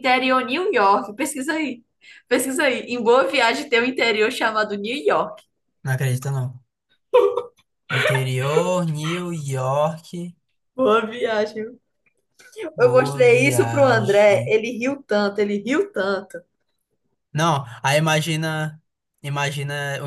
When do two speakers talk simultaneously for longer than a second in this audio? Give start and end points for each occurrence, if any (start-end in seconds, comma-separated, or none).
12.8-14.6